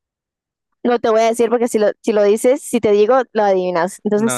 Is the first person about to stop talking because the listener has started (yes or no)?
yes